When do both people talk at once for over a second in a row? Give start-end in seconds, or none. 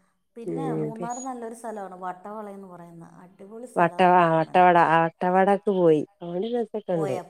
none